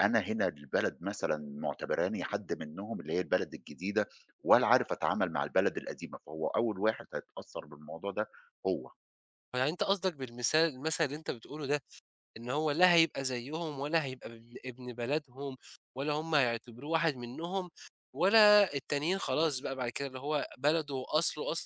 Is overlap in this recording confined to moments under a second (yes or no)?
yes